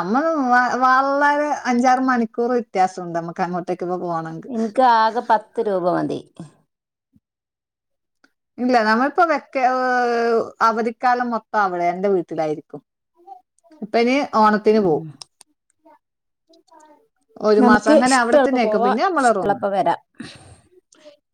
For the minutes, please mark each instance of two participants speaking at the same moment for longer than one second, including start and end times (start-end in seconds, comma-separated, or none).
17.6-19.6